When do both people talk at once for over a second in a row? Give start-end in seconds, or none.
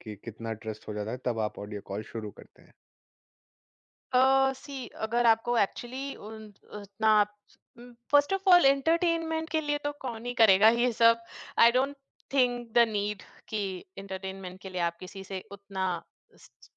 none